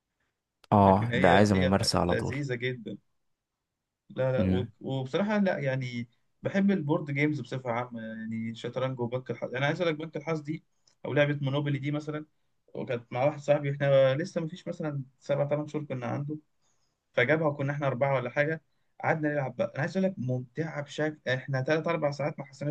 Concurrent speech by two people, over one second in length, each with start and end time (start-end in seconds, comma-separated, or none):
0.7-2.4